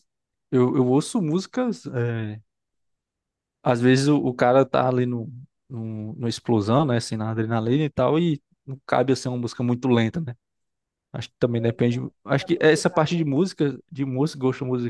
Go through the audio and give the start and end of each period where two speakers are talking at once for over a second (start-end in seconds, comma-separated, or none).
11.6-13.2